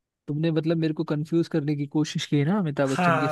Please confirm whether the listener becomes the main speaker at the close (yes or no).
yes